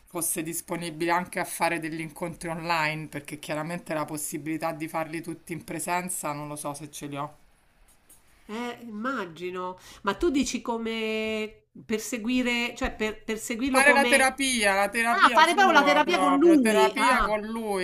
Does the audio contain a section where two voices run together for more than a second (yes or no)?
yes